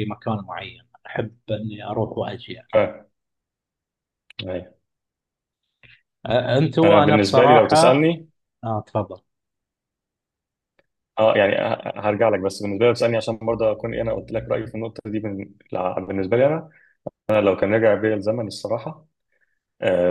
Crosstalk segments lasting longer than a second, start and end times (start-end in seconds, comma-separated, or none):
6.8-8.1